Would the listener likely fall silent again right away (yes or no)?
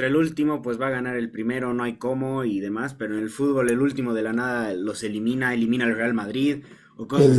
no